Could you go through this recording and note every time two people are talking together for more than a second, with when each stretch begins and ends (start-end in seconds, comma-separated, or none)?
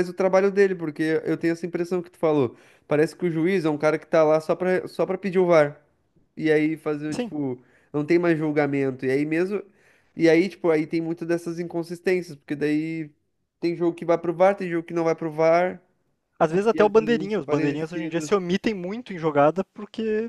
16.7-18.3